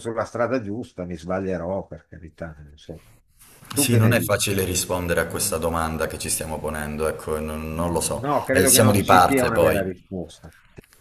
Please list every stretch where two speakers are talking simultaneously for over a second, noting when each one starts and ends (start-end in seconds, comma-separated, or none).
8.1-9.8